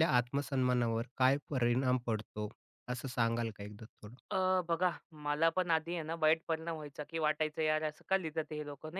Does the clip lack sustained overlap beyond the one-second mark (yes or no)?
yes